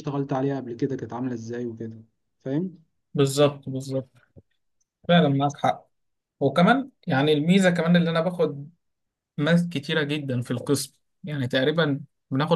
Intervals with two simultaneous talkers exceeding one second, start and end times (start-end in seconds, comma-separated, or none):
none